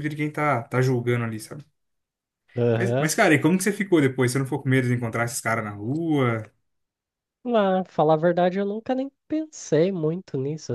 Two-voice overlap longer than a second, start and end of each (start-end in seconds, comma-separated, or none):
none